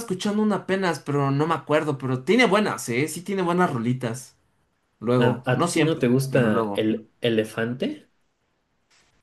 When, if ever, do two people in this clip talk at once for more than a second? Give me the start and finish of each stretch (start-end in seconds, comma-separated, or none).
5.2-6.9